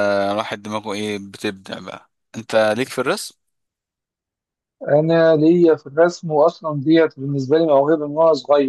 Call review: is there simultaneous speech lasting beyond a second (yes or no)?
no